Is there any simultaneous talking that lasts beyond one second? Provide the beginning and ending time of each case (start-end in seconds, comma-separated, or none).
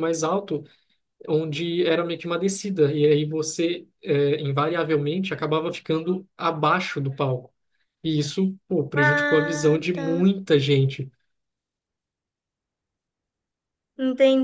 8.9-10.3